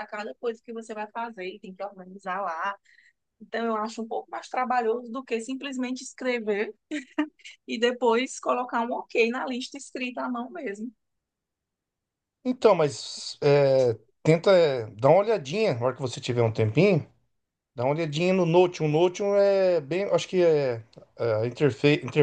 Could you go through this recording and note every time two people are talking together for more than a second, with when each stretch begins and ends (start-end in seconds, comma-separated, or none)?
none